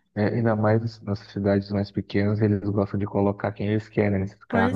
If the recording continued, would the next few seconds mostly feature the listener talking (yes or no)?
yes